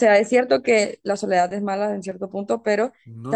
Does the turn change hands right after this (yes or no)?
no